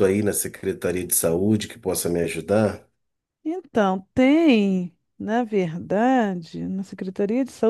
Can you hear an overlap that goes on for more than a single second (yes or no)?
no